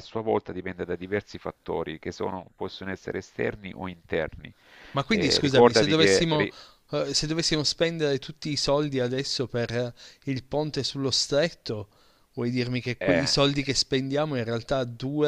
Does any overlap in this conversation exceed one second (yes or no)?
yes